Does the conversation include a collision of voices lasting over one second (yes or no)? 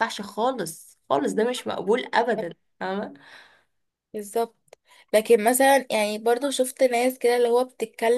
no